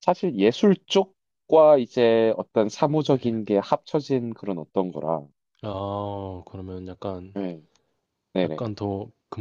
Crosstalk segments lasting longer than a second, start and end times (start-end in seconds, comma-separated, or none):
none